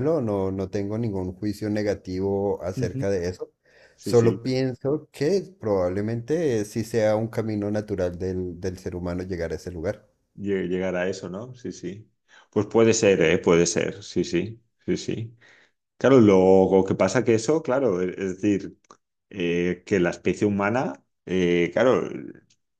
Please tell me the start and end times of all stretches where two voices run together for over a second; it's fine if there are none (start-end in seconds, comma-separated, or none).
none